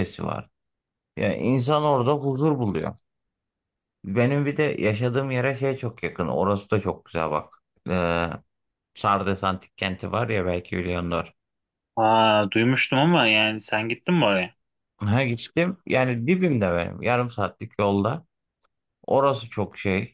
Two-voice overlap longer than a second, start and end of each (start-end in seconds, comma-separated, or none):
none